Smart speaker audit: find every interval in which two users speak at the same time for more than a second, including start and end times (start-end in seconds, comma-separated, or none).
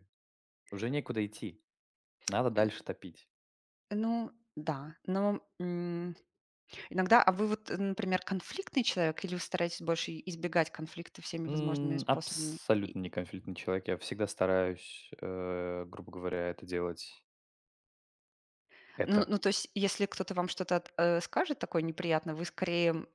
11.5-12.9